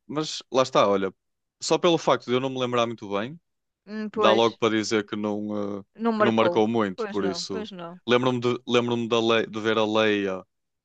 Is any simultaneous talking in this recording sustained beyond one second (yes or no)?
yes